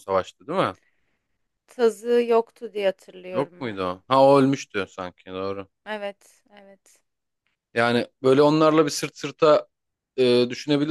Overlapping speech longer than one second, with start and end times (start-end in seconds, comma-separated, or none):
none